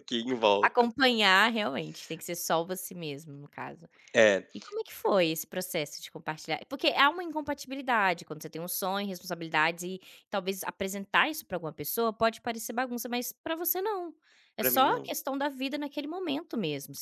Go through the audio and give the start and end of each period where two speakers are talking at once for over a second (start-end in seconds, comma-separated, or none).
none